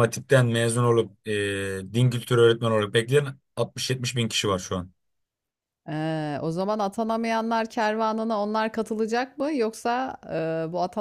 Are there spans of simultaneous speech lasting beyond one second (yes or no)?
no